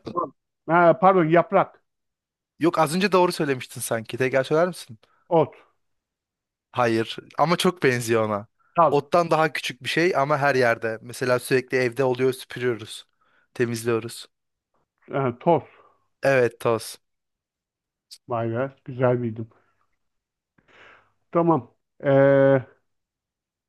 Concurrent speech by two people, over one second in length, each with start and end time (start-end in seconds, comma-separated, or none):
none